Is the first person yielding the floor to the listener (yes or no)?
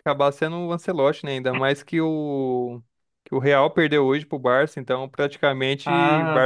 no